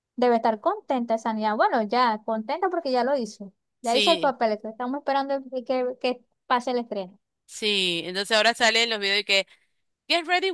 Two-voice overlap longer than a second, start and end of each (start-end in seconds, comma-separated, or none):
none